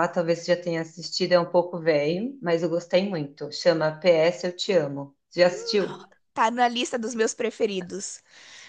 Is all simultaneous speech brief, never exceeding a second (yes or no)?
yes